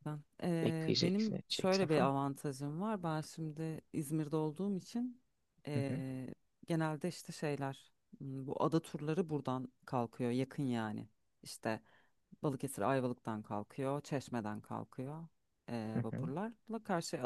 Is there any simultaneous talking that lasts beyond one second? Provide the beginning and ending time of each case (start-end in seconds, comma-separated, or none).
0.6-2.1